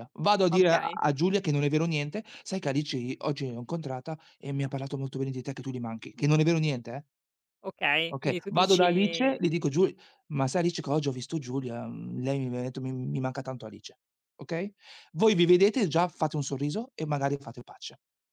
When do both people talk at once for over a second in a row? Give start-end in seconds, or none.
8.1-9.3